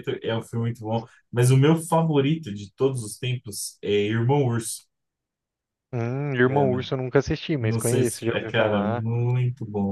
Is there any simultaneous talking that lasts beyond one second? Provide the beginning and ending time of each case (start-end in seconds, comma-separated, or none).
7.6-9.1